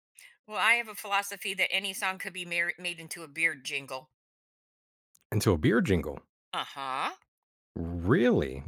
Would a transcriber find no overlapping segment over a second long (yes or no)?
yes